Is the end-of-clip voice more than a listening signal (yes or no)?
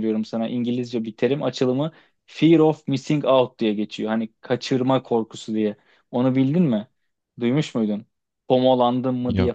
no